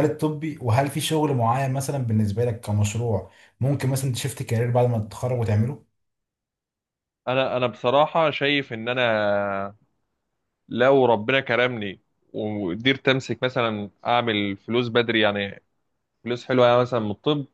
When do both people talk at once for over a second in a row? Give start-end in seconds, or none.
none